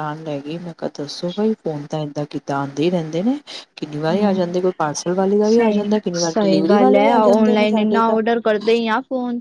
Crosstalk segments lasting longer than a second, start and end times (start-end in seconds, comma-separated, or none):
5.4-7.1